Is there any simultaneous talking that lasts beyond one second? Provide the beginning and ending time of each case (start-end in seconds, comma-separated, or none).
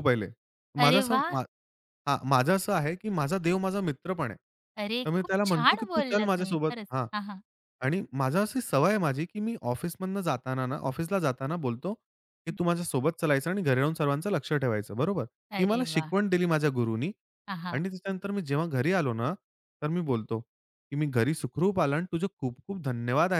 5.1-7.1